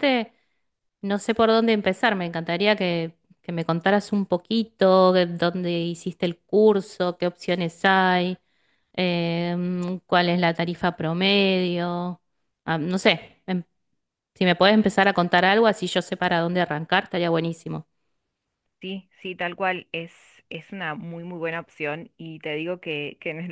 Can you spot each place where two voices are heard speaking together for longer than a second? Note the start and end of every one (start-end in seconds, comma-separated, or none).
none